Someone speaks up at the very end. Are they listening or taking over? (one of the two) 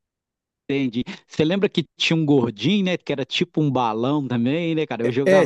taking over